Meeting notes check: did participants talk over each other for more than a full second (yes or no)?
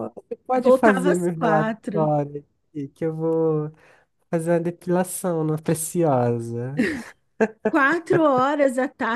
yes